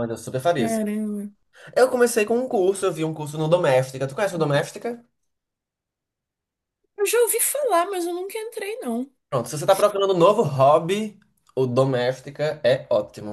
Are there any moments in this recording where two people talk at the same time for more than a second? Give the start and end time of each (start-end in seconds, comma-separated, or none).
none